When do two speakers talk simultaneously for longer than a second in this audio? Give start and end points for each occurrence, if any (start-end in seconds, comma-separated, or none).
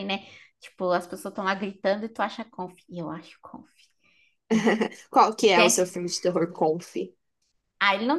none